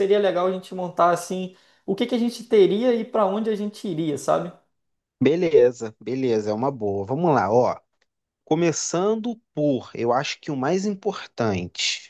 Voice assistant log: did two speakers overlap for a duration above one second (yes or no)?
no